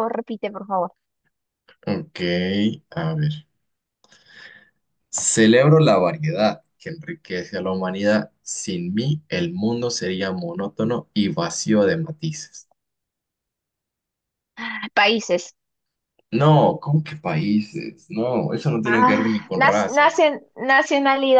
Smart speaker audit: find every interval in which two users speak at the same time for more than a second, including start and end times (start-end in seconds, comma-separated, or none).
18.8-20.3